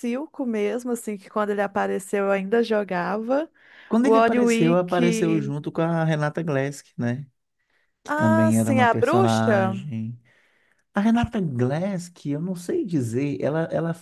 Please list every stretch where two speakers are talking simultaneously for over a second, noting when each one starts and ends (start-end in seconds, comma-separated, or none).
4.0-5.5, 8.1-9.8